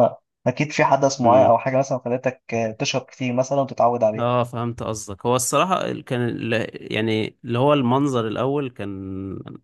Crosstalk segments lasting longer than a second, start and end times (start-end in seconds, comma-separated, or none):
none